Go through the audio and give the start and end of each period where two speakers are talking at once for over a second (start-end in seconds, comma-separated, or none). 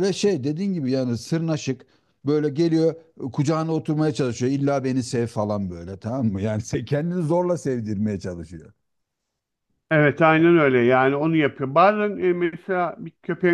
none